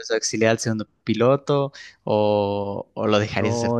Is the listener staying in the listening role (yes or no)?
no